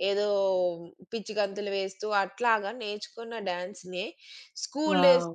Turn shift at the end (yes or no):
no